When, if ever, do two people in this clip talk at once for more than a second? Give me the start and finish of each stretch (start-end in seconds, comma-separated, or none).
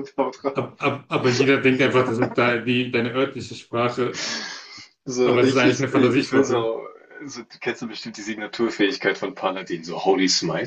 5.2-6.7